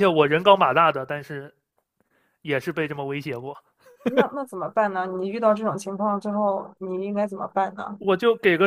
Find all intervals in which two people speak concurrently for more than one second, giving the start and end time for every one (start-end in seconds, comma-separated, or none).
none